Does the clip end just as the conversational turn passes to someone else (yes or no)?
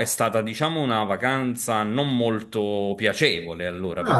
yes